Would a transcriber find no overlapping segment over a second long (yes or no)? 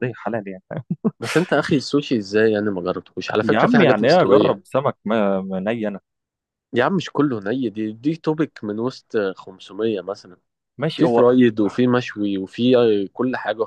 no